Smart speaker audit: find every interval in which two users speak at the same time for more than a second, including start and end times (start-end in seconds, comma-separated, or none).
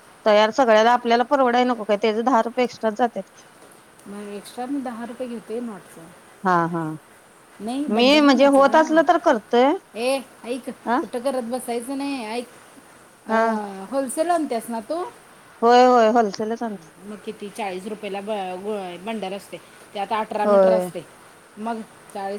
7.9-9.6